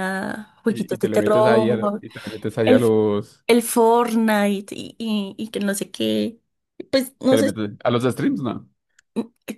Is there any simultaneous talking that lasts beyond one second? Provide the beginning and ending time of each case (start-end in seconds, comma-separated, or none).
0.6-2.0